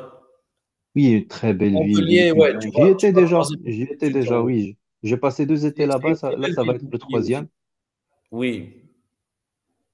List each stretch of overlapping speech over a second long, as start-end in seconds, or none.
1.7-4.5, 5.7-7.5